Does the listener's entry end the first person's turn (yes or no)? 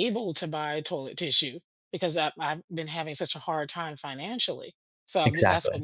no